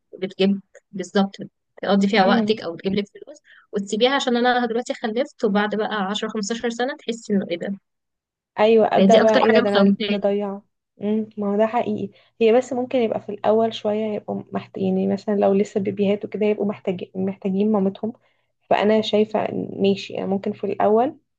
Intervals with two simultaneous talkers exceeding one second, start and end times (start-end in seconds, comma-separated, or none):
9.0-10.3